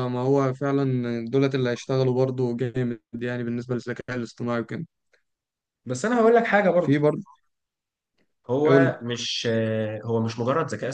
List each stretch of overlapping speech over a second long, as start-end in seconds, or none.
none